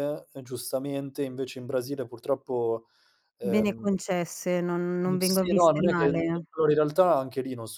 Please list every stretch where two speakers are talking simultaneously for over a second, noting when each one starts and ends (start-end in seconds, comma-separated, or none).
5.2-6.4